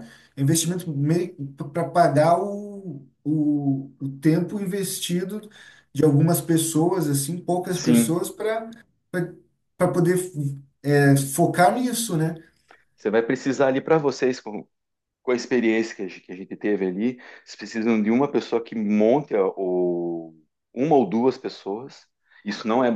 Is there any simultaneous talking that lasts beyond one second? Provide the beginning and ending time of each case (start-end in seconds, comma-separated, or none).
none